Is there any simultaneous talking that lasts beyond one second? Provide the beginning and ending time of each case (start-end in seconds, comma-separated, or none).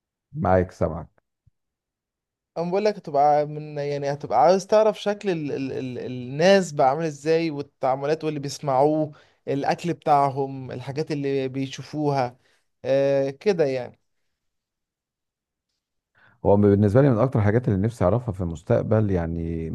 none